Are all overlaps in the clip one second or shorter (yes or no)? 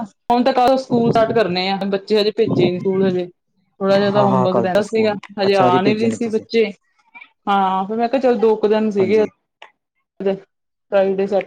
no